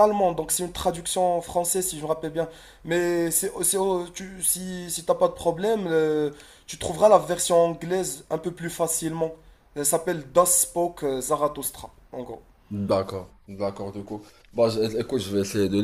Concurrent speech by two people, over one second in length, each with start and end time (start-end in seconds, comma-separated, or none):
none